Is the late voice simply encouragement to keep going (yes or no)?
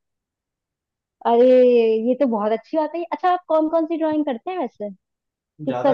no